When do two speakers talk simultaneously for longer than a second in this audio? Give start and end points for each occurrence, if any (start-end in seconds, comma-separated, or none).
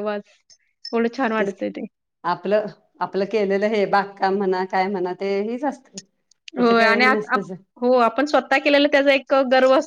none